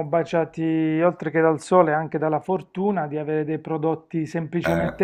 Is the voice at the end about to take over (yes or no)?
no